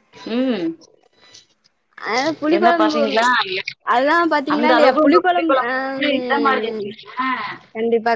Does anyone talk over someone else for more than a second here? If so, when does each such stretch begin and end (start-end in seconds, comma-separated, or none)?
4.5-6.9